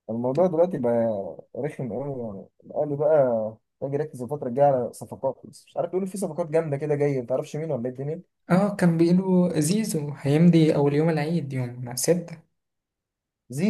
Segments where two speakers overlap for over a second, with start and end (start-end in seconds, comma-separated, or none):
none